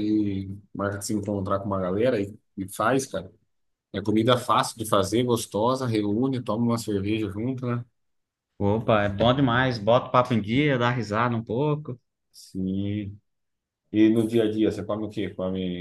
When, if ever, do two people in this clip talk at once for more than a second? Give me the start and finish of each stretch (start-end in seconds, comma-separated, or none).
none